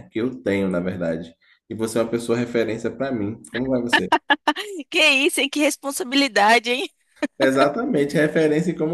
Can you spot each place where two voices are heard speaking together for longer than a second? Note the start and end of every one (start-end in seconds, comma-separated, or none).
none